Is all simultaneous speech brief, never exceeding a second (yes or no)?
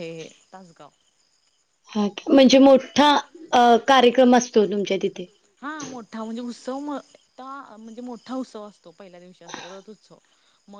yes